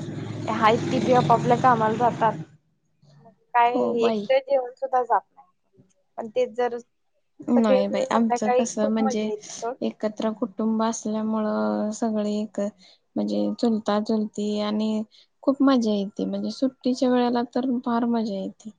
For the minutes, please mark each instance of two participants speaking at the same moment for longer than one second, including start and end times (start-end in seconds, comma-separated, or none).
7.5-9.3